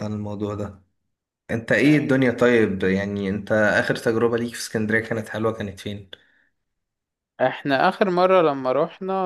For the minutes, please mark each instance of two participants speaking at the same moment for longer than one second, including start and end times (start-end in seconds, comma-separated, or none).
none